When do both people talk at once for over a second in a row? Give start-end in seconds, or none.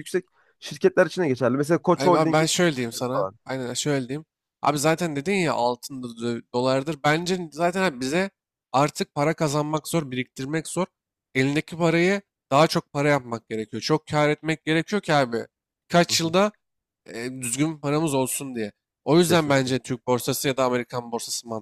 1.9-3.4